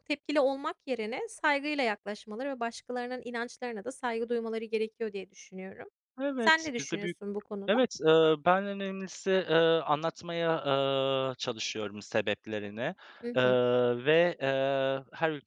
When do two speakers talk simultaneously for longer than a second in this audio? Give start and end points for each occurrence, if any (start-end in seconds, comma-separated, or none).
none